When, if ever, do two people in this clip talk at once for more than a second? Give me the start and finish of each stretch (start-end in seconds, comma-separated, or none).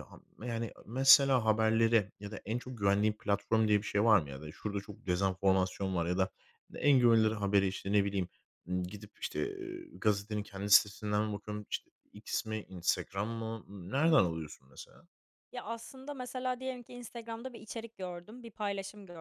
none